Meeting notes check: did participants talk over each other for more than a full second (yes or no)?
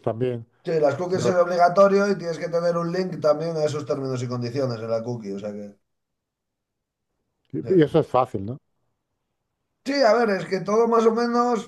no